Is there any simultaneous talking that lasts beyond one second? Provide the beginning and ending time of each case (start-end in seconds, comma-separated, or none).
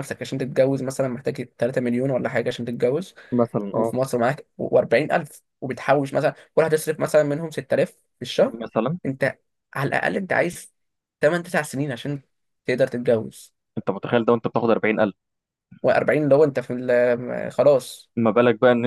none